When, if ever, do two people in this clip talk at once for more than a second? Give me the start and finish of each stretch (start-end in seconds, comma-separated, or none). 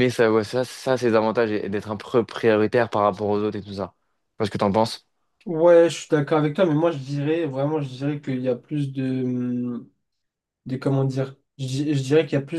none